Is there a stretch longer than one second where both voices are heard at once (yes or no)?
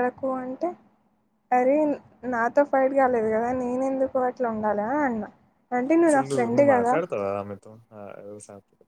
no